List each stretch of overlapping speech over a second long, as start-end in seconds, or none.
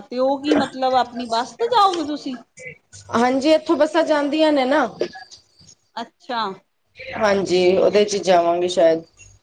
none